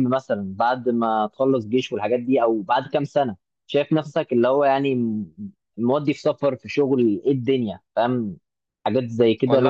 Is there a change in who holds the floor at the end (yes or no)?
yes